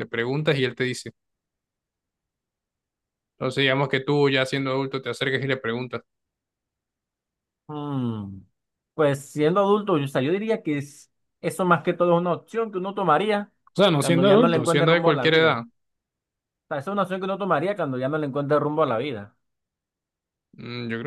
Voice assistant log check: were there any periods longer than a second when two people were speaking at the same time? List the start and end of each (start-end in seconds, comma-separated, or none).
14.0-15.6